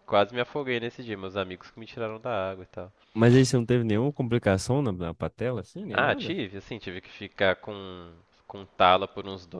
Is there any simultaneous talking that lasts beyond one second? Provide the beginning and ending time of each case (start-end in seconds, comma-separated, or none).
none